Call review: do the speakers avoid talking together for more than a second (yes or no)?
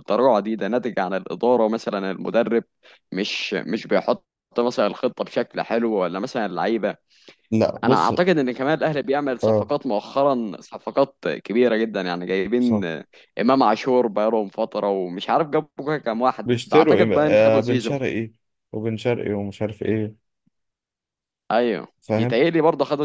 no